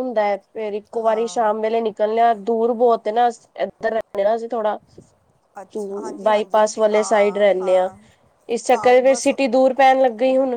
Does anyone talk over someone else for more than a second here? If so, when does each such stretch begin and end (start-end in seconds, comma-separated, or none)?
5.8-7.9